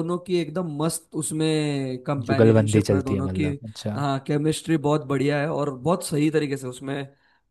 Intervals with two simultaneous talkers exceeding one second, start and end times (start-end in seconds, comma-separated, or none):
2.3-3.5